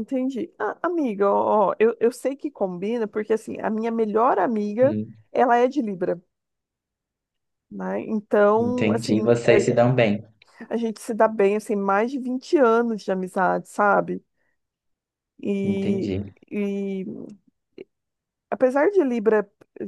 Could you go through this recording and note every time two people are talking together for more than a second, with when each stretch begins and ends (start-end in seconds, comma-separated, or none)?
8.6-9.8